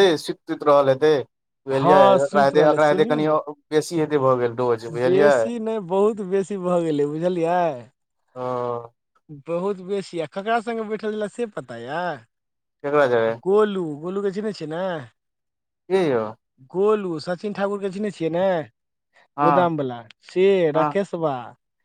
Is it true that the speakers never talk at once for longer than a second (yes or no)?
no